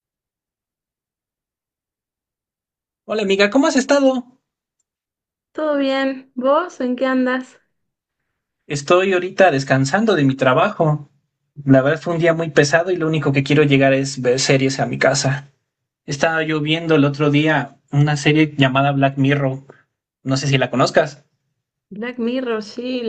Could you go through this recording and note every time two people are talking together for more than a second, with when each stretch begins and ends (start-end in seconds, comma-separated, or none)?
none